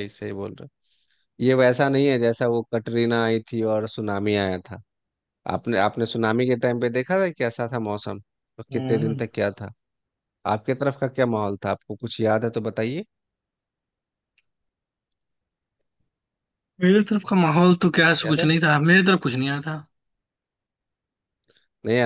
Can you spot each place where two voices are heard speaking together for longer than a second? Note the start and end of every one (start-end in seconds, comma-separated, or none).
none